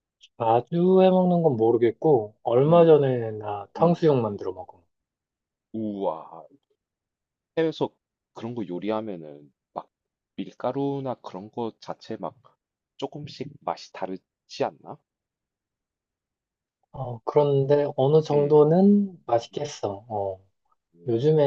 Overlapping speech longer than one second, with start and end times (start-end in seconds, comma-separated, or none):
none